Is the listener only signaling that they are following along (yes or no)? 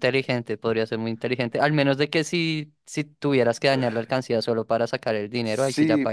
no